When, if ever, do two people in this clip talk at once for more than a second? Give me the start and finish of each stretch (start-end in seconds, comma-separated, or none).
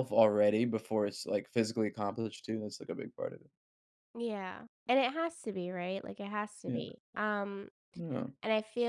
none